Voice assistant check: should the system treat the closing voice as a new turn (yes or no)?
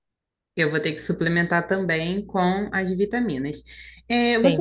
no